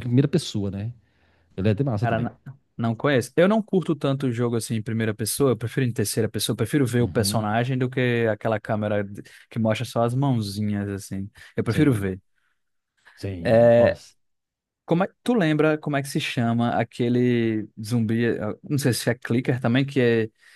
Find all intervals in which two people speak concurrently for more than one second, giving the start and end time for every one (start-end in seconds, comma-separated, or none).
none